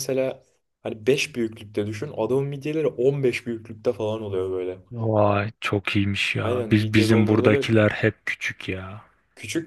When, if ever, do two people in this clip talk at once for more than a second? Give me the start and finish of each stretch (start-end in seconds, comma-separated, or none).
6.4-7.7